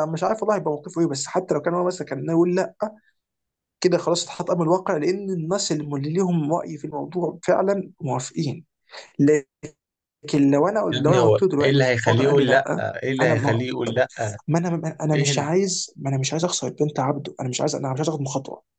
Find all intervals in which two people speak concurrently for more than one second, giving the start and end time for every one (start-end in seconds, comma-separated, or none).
10.9-13.6